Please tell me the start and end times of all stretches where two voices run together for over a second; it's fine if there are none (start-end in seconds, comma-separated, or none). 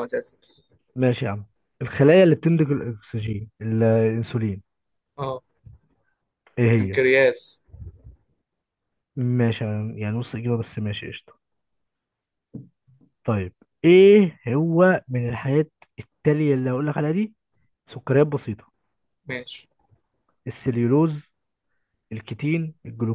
none